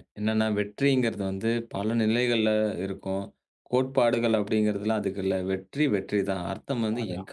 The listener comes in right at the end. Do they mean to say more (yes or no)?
no